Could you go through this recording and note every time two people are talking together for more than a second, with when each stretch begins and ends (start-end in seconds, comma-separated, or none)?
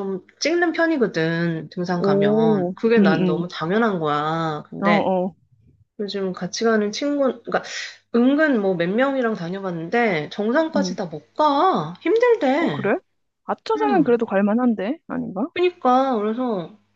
1.9-3.5